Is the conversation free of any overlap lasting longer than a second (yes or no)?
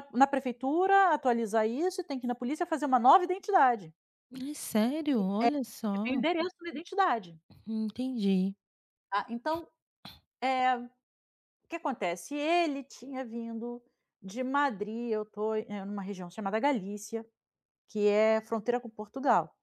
yes